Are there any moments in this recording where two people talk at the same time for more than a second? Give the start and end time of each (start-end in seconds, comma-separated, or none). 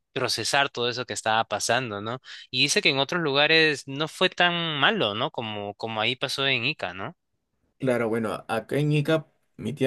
none